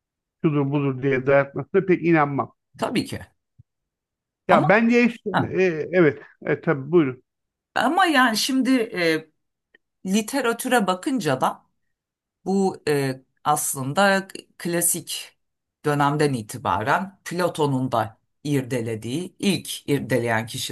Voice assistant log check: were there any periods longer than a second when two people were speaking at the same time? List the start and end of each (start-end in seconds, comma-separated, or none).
none